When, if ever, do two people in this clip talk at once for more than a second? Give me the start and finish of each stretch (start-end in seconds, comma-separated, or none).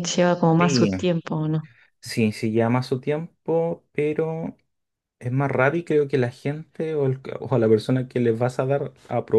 none